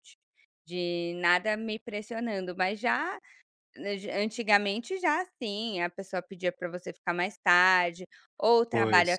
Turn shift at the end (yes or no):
no